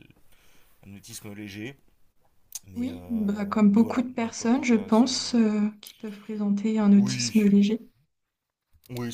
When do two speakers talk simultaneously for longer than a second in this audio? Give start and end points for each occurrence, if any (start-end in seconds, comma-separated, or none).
2.8-5.1